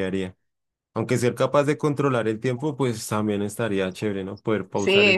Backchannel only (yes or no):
no